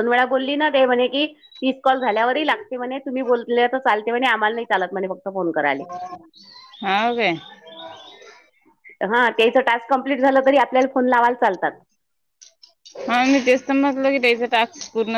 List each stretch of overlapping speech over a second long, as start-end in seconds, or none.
none